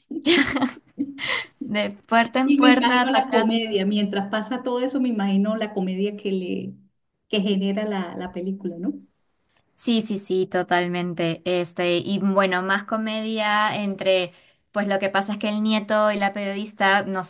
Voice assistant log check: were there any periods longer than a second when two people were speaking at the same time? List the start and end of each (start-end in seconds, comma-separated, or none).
2.4-3.8